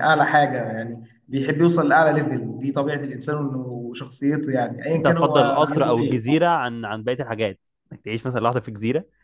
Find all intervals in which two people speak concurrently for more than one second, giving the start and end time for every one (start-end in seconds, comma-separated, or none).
4.9-6.2